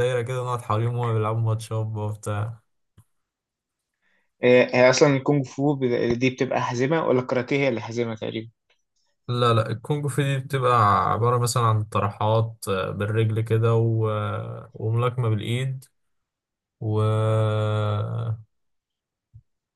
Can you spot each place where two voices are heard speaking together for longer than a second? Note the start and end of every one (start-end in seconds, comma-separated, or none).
none